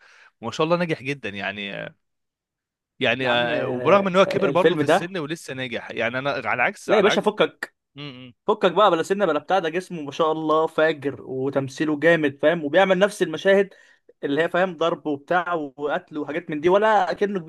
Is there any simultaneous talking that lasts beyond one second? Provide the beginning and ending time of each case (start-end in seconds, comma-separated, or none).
3.2-5.1